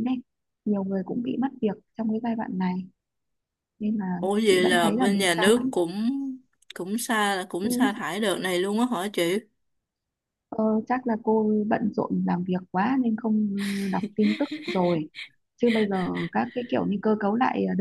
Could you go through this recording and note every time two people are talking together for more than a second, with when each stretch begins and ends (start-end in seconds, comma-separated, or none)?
4.2-5.7